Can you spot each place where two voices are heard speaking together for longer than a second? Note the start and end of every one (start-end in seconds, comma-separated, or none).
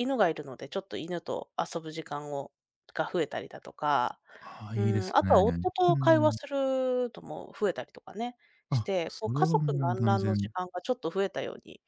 4.8-6.4, 8.7-10.5